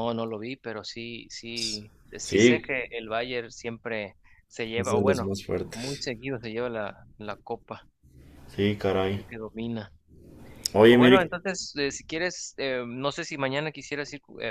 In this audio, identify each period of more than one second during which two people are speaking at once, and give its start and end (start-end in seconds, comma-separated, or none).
4.8-6.1